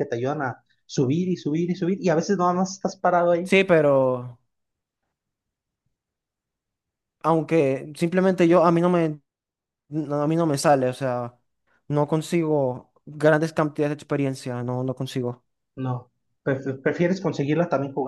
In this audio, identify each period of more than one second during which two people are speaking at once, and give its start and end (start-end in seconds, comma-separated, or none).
none